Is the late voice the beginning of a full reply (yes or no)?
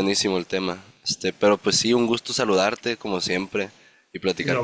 yes